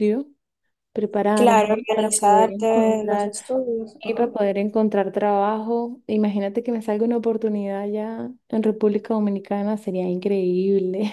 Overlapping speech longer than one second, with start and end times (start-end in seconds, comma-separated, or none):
1.3-3.3